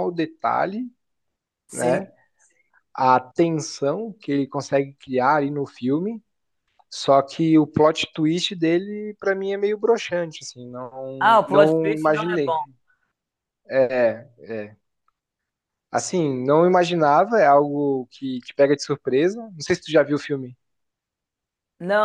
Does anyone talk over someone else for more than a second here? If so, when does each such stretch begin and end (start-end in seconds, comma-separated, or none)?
11.2-12.5